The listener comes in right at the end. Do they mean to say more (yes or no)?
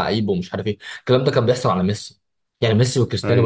no